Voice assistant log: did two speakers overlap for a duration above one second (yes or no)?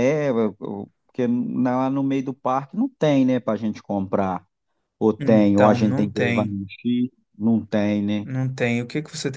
yes